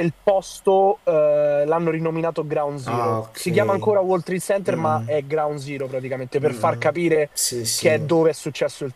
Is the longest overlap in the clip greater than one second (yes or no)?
no